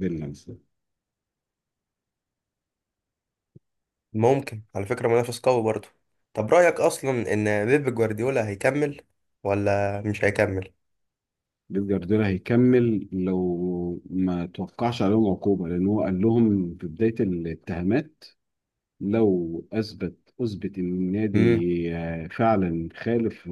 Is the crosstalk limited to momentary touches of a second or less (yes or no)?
yes